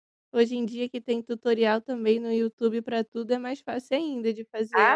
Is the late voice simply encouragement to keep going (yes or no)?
no